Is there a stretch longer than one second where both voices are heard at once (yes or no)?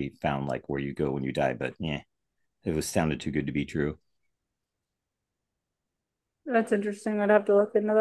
no